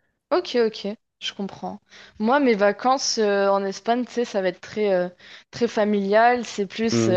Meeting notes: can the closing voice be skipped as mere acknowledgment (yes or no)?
yes